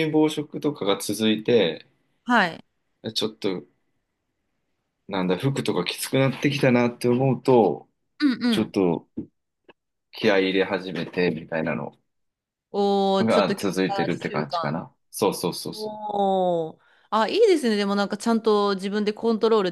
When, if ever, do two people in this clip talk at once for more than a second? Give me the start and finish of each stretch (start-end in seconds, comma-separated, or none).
13.2-14.8